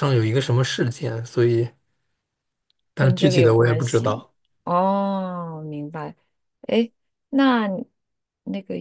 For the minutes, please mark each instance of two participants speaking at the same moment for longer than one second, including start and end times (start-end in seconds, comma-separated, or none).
3.0-4.2